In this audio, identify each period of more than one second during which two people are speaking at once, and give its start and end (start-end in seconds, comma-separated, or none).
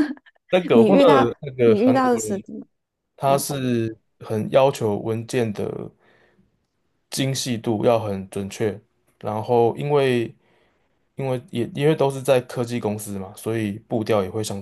0.7-2.4